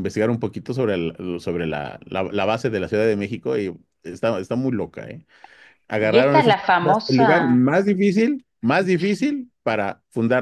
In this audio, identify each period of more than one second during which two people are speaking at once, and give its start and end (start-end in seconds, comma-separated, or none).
6.0-7.5